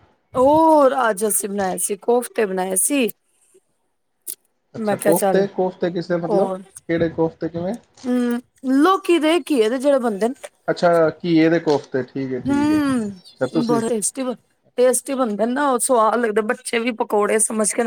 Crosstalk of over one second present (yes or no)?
yes